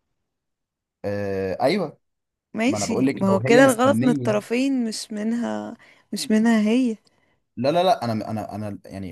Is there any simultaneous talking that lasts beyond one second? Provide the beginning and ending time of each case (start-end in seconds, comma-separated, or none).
2.6-4.4